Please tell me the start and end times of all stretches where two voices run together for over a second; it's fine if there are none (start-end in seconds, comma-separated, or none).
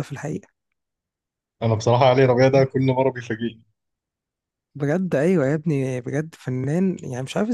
none